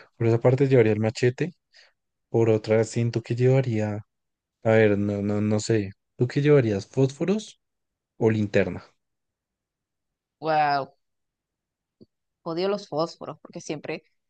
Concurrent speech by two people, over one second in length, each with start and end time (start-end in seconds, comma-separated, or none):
none